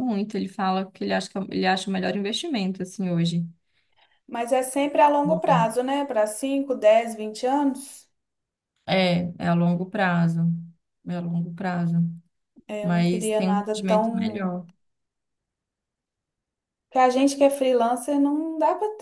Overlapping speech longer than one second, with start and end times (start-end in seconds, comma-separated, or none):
12.8-14.6